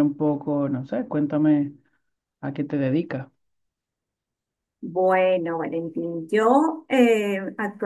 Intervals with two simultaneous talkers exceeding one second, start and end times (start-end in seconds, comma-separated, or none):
none